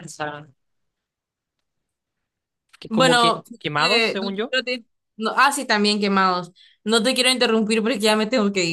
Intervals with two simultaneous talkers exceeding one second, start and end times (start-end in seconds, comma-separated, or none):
2.9-4.6